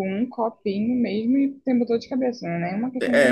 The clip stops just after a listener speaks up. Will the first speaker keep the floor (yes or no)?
no